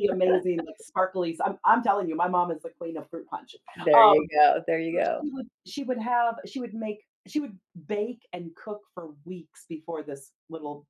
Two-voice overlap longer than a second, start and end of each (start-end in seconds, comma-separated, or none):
none